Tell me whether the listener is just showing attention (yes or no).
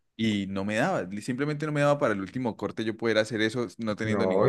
no